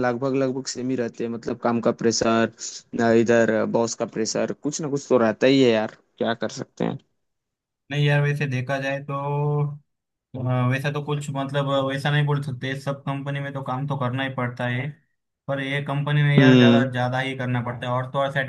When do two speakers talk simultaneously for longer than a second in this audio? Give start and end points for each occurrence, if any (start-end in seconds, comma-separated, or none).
none